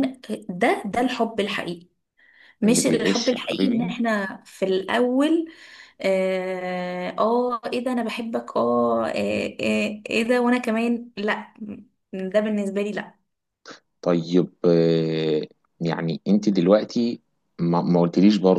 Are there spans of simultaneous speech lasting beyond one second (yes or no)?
yes